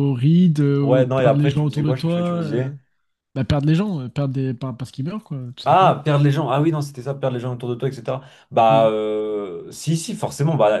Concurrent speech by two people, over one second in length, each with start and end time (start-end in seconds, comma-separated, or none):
0.8-2.7